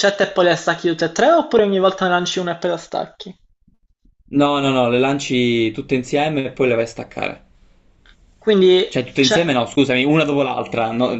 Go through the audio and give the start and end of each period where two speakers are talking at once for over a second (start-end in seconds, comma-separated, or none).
none